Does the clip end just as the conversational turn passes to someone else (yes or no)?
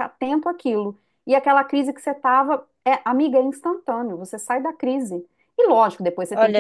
no